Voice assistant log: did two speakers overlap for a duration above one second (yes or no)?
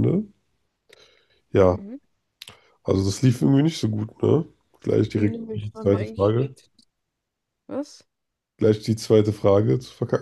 yes